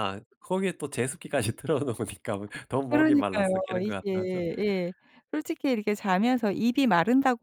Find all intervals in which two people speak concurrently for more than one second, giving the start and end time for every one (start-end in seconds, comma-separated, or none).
2.9-4.4